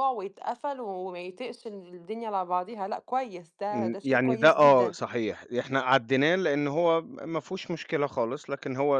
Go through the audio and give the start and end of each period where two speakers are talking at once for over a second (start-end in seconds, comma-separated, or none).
3.7-5.0